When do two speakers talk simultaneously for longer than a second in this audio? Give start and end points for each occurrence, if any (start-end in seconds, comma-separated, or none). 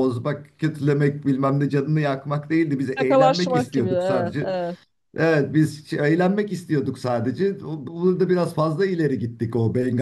3.0-4.5